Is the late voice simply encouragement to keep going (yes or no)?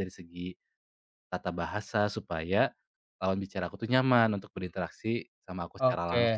no